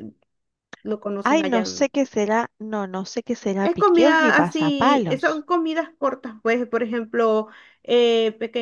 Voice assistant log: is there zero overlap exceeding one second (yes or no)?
no